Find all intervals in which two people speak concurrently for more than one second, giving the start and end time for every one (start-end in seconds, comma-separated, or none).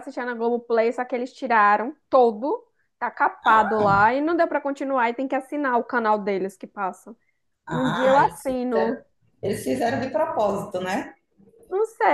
7.7-9.0